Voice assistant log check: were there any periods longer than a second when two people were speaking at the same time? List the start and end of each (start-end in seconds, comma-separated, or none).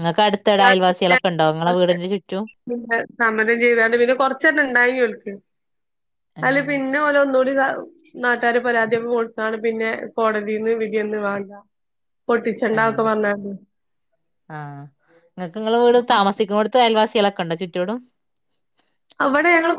none